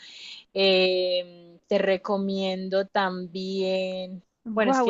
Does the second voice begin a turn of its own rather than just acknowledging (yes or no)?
yes